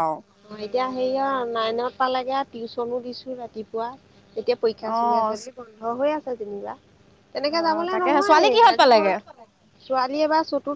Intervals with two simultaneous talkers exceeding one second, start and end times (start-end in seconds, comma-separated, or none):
7.5-8.9